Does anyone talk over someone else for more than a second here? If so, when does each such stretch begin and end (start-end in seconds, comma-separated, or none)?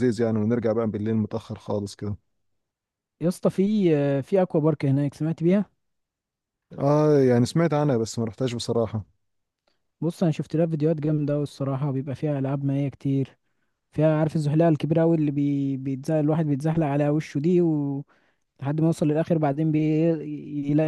none